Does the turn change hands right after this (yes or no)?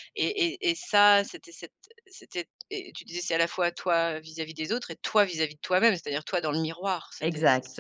yes